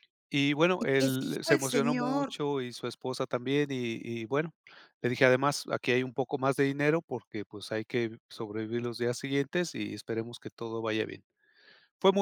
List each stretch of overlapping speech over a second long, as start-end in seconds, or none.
0.8-2.4